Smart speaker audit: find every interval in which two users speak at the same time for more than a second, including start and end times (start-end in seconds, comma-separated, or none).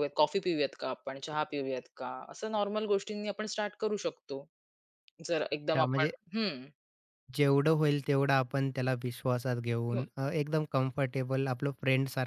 none